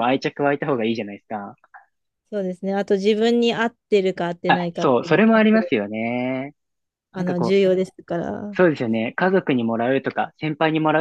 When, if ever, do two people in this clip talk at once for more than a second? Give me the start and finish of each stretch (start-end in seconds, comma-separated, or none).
4.5-5.8